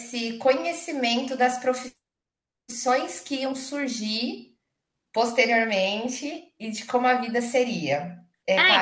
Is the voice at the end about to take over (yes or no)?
yes